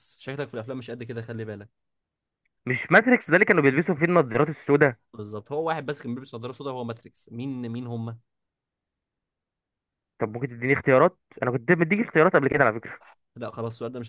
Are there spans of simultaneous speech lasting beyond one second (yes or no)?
no